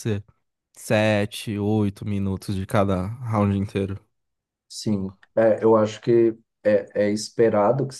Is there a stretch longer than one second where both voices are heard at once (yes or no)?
no